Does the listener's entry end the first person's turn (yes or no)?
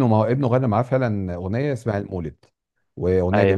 no